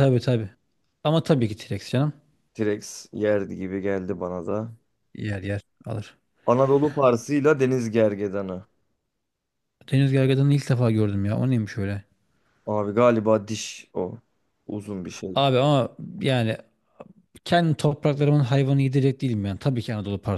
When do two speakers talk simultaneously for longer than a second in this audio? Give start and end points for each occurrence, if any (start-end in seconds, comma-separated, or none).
none